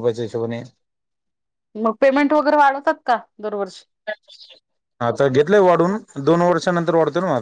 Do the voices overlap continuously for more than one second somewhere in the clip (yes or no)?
no